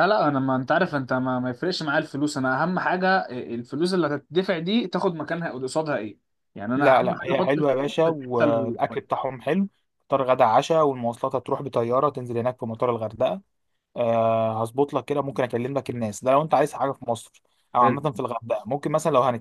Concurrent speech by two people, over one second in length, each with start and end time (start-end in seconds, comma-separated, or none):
6.8-9.2